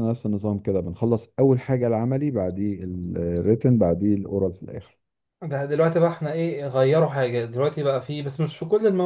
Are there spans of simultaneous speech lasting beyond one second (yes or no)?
no